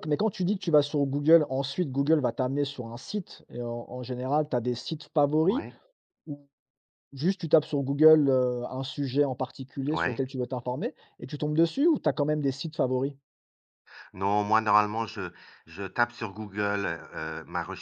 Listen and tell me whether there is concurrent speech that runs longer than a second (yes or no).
no